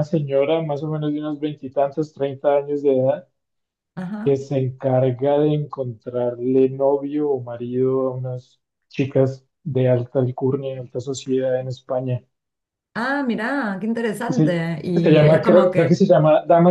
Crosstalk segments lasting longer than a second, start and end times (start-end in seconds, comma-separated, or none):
14.3-16.0